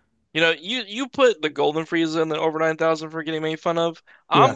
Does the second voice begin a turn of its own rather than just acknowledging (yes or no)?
no